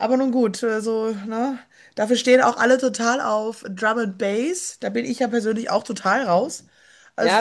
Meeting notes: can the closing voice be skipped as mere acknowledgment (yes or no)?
no